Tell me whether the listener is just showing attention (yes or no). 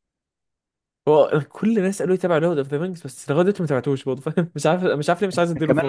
no